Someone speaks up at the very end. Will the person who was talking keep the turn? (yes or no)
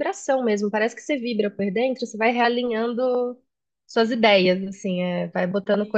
yes